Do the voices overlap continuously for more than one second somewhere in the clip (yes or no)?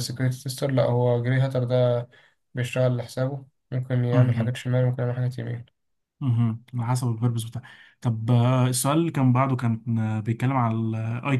no